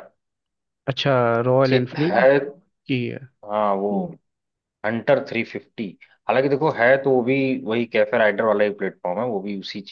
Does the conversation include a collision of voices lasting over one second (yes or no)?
no